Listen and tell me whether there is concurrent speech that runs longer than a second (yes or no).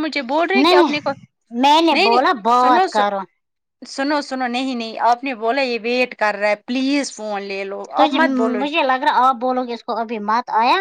yes